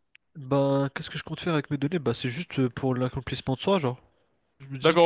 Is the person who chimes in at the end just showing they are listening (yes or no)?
no